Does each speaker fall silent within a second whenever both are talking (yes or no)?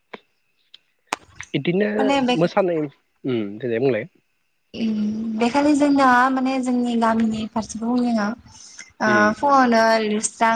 yes